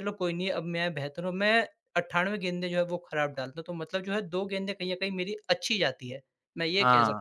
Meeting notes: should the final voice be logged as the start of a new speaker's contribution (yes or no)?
yes